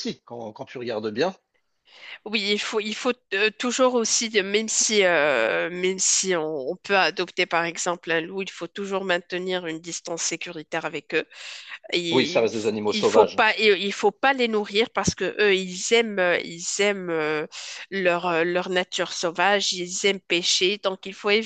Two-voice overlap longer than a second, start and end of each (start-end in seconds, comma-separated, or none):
12.1-13.4